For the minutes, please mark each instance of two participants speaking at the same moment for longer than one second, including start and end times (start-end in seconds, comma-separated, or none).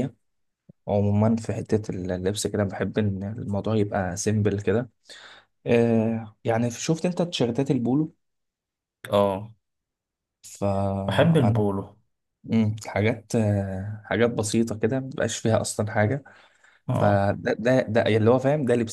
none